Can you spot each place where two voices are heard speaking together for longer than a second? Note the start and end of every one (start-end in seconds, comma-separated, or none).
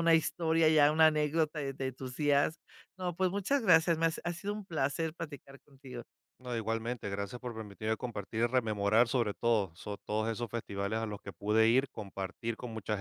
none